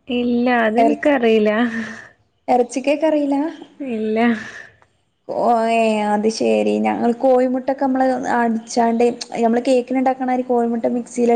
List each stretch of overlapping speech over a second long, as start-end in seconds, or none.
none